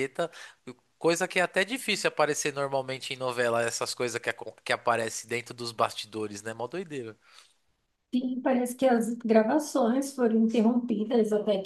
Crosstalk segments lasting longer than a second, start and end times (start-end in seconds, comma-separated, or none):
none